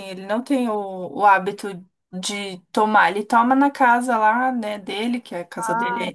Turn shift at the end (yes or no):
no